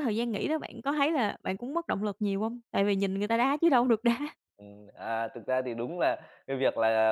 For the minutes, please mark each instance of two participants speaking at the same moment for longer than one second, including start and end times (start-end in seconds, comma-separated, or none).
none